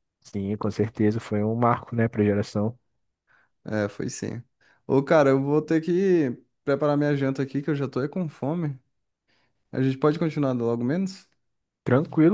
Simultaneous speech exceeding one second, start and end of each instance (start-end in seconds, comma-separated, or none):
none